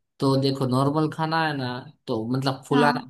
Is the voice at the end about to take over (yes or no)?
no